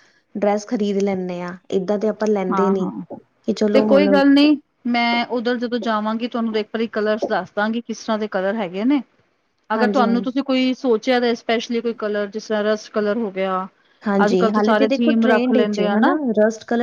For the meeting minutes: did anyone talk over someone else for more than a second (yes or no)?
yes